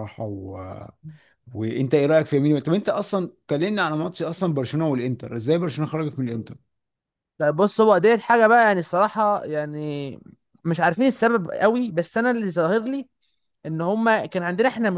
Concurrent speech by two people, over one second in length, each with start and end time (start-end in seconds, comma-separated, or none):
none